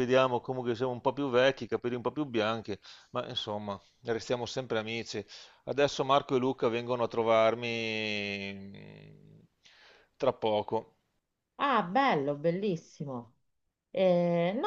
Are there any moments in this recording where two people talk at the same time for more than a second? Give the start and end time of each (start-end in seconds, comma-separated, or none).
none